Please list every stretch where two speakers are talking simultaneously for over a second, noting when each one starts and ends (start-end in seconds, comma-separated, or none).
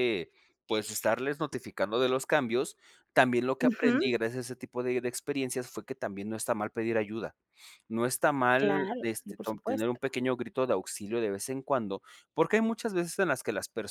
8.6-10.0